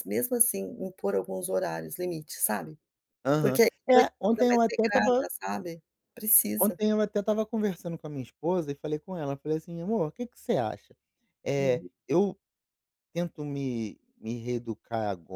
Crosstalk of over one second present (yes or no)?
yes